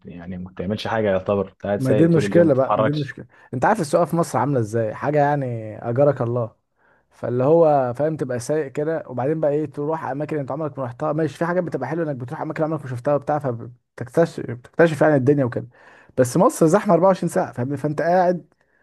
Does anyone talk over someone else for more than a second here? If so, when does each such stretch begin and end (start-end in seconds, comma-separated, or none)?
1.8-3.1